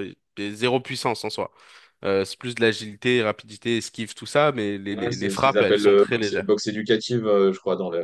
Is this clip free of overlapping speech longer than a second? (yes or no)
no